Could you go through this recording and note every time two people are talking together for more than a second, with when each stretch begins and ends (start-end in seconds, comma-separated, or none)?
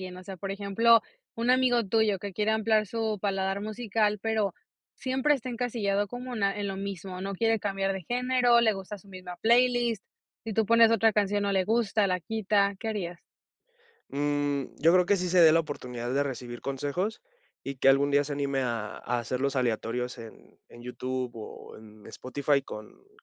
none